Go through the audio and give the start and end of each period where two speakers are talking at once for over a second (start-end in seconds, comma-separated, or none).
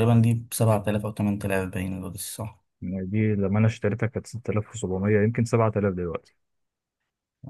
none